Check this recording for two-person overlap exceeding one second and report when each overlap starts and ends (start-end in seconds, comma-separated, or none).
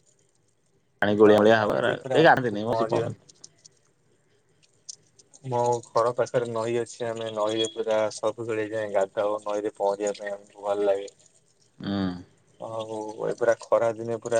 1.2-3.1